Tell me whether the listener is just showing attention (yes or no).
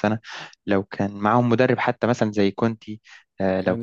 no